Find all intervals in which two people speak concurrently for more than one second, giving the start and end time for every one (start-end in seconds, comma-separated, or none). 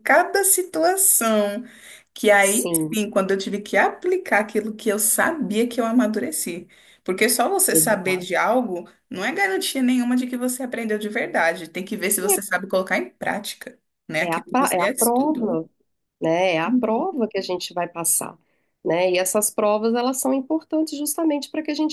14.2-15.6